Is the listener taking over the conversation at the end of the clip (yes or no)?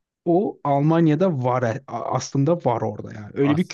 yes